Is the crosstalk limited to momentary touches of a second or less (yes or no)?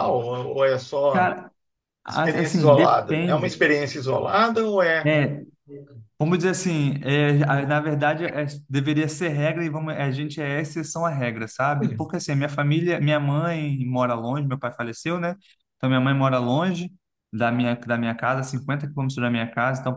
no